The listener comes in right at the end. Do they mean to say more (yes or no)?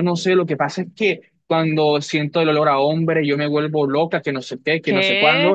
no